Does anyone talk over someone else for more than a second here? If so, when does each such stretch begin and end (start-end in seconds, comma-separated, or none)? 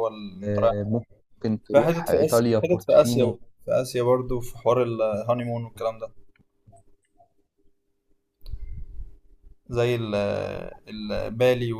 1.7-3.4